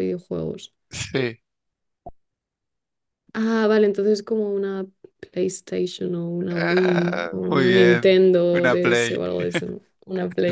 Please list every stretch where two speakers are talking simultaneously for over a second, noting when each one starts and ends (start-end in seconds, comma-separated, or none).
6.5-9.2